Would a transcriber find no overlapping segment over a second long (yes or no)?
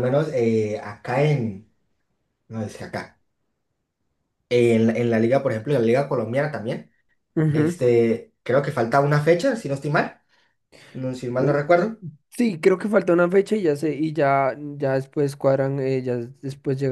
yes